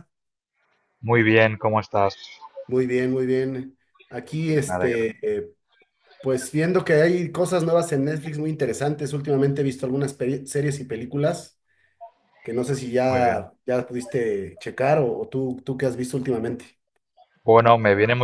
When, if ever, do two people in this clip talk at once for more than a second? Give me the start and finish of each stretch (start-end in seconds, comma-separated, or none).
none